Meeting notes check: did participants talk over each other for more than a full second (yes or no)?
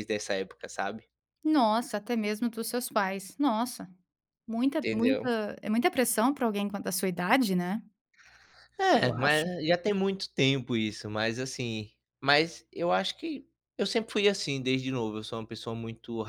no